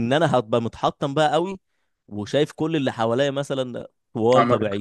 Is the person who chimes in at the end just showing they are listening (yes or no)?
yes